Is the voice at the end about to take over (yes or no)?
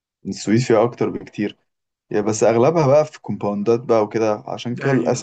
no